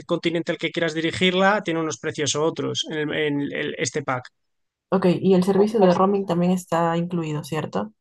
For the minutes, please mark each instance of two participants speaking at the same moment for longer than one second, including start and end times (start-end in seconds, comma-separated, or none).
none